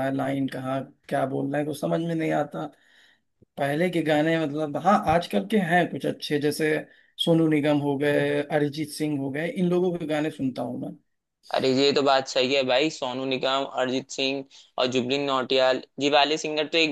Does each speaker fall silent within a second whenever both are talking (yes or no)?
yes